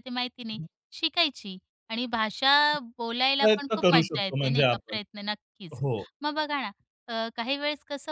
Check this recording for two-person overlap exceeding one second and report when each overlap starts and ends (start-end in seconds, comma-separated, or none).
3.4-5.0